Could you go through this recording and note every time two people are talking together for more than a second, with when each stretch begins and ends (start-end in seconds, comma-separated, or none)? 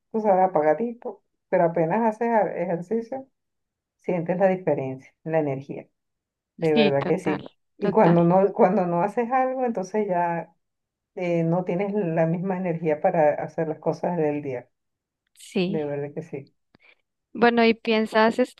6.7-8.2